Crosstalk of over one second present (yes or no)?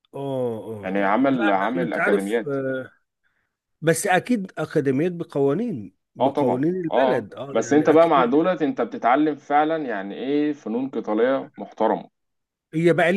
yes